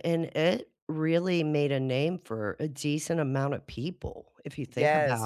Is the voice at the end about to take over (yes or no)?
yes